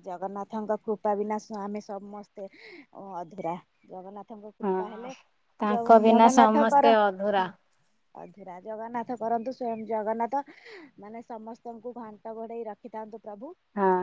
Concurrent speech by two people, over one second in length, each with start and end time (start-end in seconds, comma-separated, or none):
5.7-7.4